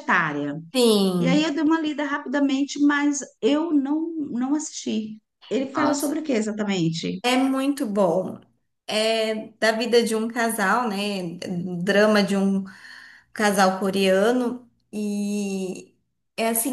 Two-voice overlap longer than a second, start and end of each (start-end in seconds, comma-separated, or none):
none